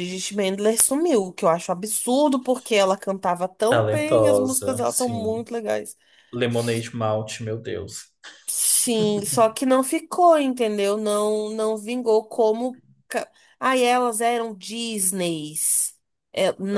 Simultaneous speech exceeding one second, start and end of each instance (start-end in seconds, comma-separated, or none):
3.7-5.4